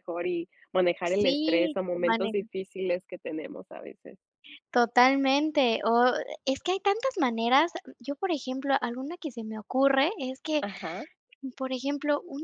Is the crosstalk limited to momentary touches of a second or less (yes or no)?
no